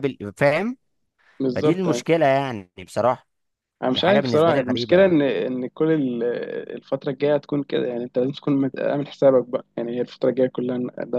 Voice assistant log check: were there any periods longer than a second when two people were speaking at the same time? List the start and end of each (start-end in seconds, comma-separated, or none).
3.9-5.2